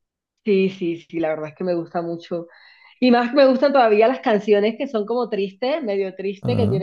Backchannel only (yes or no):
yes